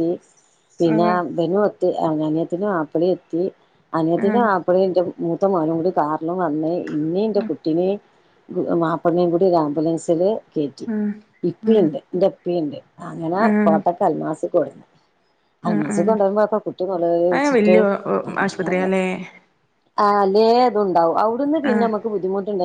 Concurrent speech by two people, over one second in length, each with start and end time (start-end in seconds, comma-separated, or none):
none